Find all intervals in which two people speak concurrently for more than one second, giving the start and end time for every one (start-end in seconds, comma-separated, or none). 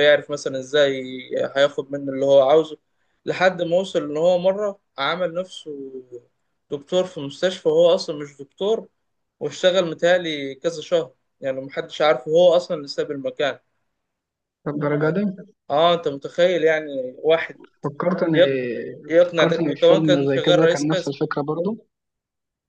19.3-21.1